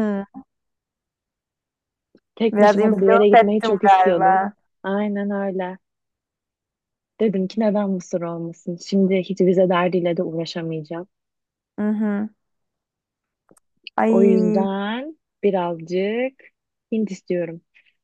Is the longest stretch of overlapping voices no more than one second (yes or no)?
no